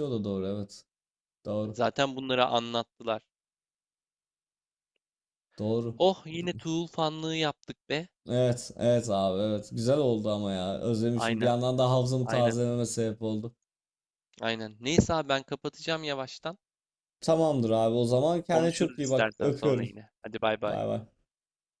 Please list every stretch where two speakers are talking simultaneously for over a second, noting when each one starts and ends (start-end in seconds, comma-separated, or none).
18.5-19.9